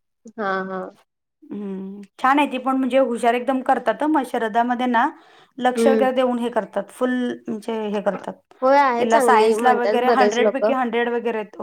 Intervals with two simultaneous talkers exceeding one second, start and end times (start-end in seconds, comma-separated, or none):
9.0-10.7